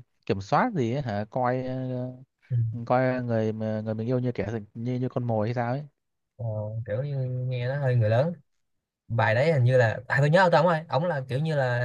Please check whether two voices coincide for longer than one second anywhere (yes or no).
no